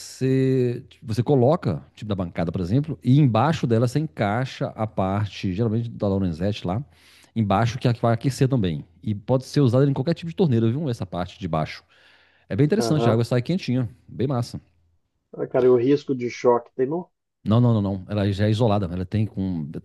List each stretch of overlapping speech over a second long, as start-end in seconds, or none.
none